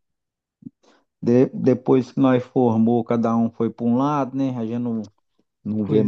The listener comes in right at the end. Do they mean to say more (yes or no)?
yes